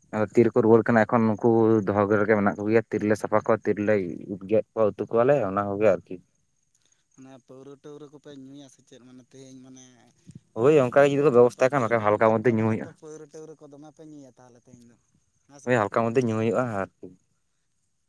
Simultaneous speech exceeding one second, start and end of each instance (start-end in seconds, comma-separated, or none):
10.6-12.9